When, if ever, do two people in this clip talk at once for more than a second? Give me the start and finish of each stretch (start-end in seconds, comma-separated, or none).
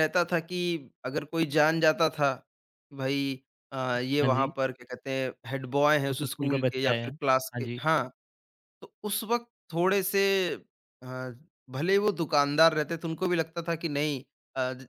6.1-7.8